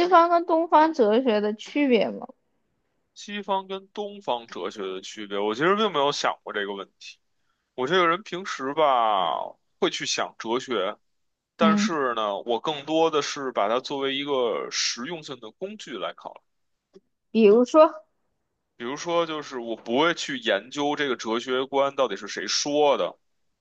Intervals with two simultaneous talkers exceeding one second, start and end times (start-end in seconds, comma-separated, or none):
none